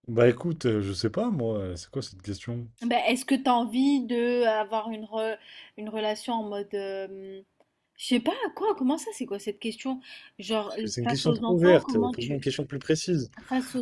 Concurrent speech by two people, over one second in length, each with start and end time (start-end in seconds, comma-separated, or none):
10.8-12.5